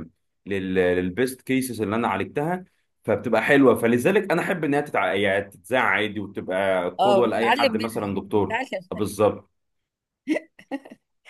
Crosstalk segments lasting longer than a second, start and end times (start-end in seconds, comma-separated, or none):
7.0-8.8